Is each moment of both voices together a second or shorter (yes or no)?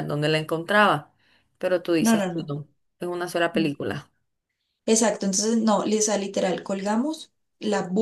yes